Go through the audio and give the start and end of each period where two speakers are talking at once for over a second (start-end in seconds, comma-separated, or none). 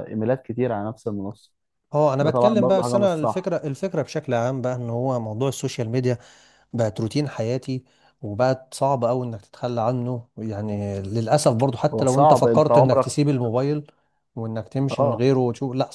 2.2-3.5, 11.9-13.2